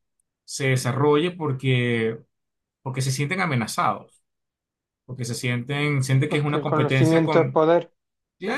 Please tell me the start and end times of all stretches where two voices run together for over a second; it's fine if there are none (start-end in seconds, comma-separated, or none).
6.2-7.6